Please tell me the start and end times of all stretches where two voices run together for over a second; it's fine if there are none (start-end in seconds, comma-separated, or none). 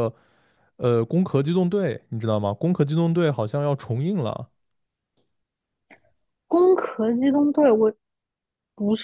none